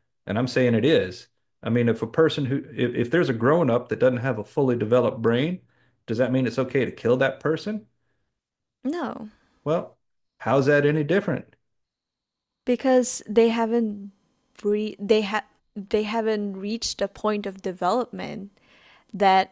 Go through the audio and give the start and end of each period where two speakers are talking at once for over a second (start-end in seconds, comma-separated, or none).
none